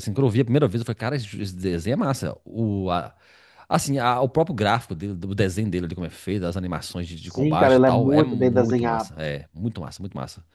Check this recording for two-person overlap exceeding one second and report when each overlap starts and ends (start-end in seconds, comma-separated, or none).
7.2-9.2